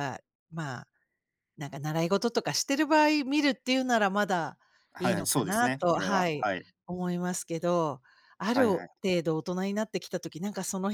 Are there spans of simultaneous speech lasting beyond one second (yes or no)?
yes